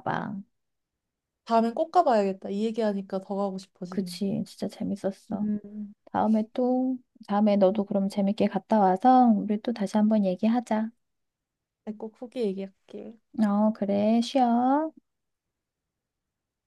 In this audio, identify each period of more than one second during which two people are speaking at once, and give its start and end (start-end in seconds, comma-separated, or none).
none